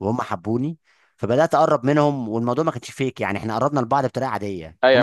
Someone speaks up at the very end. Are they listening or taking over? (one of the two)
taking over